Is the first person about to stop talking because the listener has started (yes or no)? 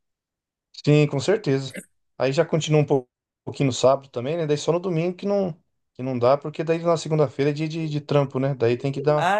yes